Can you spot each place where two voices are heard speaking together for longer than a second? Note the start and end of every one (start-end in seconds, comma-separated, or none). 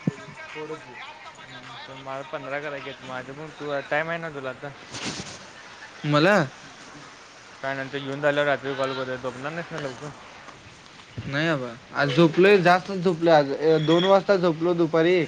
none